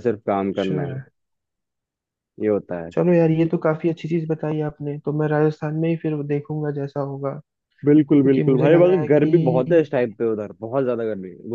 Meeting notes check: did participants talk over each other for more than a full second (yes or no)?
yes